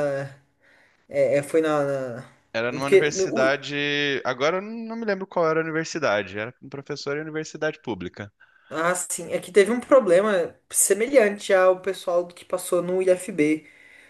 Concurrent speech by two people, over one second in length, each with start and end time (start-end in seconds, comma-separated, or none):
none